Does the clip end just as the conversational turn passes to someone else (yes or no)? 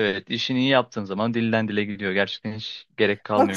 yes